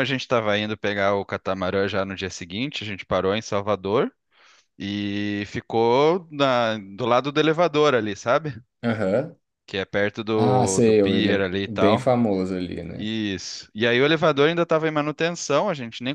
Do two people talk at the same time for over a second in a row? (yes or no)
yes